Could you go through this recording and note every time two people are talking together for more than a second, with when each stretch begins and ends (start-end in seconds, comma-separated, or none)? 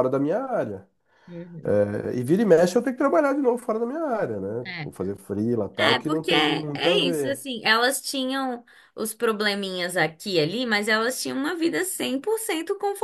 5.8-7.5